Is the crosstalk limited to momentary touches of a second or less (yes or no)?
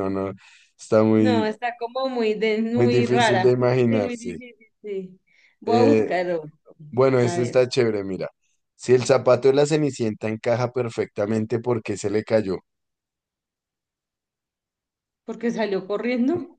no